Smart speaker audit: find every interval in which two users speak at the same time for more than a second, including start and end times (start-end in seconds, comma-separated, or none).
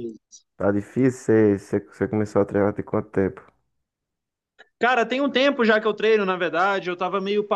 none